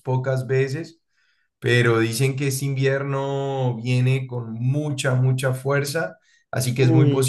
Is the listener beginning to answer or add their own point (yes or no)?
no